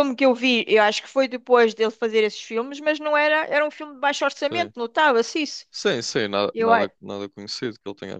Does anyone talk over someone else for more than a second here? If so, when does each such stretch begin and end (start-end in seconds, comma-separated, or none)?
none